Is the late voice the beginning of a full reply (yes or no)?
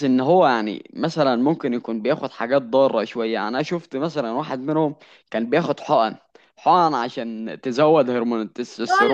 yes